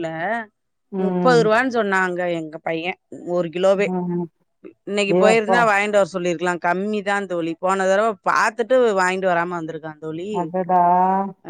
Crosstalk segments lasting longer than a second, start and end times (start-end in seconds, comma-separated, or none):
none